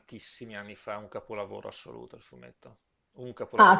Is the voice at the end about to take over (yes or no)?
yes